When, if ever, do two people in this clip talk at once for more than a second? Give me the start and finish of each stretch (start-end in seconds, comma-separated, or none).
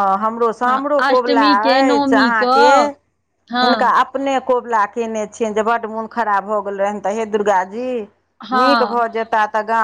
0.7-2.7